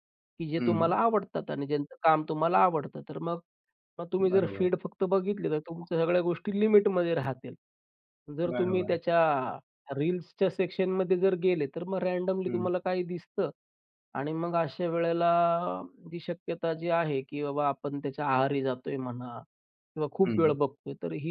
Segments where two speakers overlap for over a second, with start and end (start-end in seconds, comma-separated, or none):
none